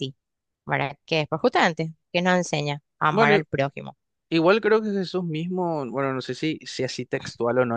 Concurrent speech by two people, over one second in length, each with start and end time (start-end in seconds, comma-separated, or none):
none